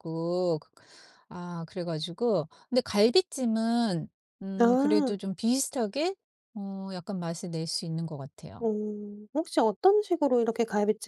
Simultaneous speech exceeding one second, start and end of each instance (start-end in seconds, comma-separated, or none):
none